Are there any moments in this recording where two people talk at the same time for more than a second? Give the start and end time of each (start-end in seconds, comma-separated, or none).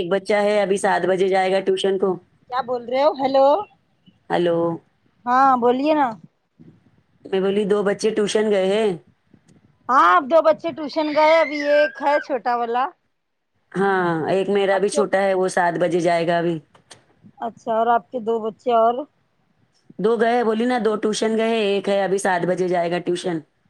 none